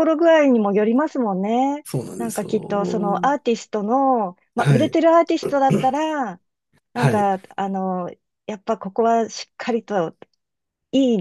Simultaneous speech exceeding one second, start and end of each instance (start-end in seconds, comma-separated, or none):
1.8-3.3